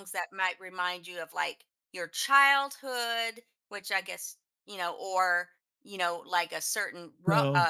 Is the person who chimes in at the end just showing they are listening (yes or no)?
yes